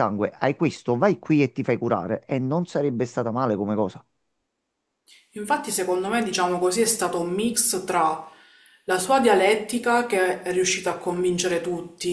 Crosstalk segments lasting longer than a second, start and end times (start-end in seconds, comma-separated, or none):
none